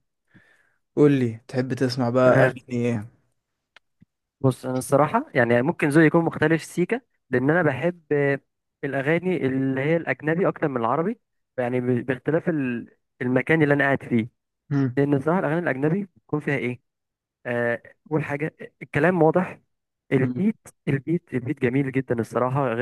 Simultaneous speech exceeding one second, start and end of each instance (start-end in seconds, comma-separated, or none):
none